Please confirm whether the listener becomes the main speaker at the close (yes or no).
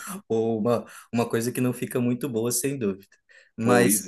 no